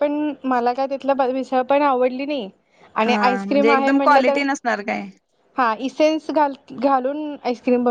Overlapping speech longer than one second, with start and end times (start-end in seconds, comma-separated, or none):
3.0-4.4